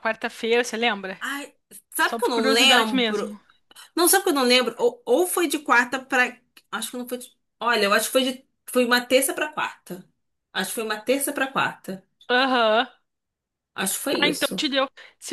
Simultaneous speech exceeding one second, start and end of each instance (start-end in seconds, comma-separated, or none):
2.0-3.3